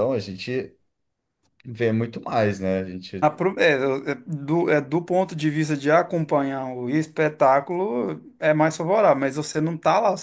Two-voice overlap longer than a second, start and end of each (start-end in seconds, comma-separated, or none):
none